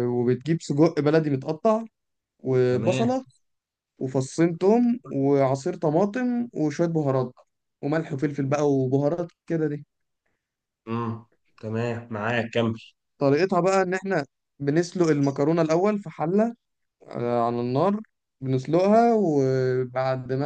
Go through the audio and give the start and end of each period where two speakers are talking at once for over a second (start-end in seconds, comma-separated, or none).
none